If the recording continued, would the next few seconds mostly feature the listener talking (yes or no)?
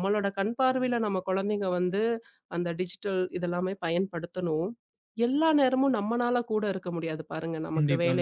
no